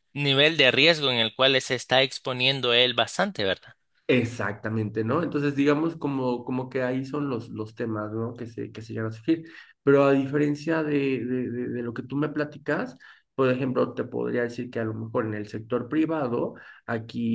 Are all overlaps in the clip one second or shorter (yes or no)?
yes